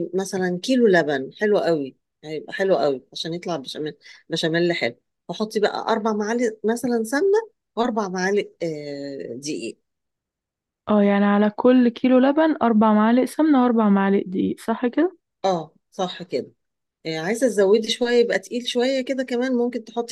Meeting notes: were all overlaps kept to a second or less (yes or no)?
yes